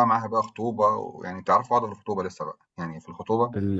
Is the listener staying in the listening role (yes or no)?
no